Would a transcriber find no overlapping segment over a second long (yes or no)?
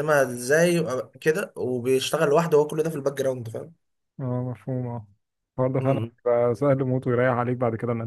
yes